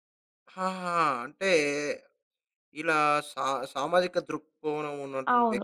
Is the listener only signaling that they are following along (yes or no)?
no